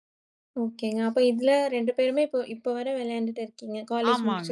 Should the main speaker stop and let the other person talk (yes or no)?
yes